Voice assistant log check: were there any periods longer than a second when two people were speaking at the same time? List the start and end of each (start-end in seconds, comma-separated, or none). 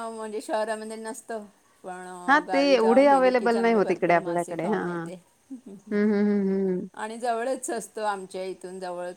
2.3-4.8